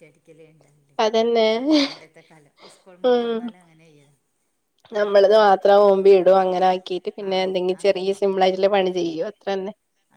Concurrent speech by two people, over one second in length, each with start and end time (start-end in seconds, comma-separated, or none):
none